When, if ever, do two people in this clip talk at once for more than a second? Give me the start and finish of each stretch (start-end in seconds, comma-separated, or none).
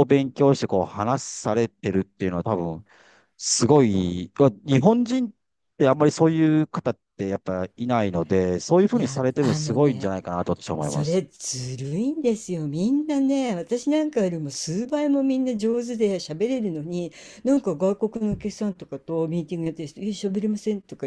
8.9-10.1